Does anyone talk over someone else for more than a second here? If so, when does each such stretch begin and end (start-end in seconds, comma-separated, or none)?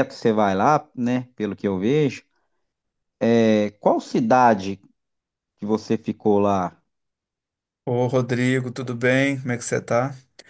none